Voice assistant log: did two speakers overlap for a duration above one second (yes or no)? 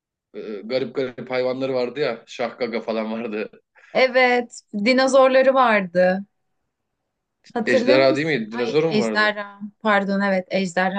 yes